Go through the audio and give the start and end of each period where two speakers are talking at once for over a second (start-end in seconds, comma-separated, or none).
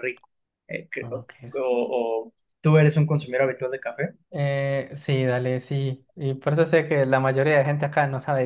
none